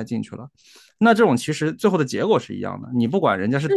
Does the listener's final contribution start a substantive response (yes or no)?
yes